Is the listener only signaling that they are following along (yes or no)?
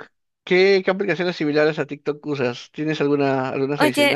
no